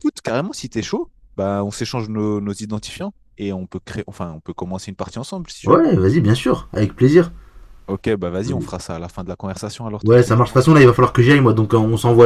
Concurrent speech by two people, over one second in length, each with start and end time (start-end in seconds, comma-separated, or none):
none